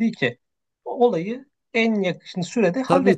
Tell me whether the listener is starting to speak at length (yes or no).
yes